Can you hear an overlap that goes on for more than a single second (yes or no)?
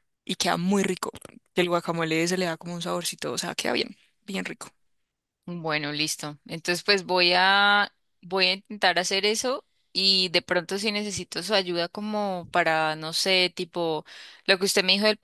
no